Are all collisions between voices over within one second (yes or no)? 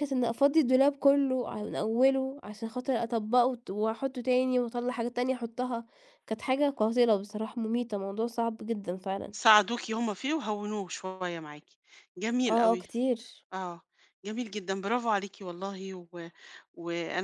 yes